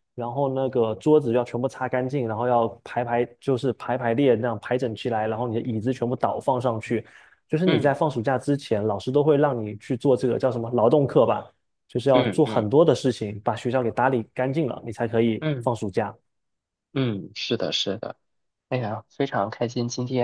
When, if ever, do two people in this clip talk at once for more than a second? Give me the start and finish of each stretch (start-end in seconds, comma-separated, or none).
none